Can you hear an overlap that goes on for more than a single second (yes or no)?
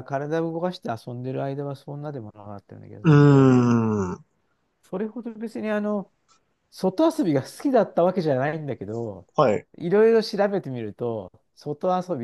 no